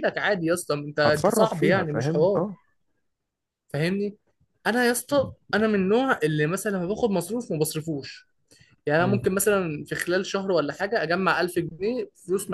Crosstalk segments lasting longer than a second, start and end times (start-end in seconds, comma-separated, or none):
1.1-2.4